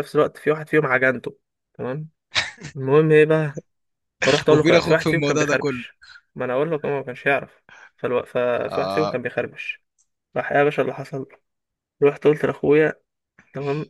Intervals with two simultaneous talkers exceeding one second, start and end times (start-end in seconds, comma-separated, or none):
4.5-5.8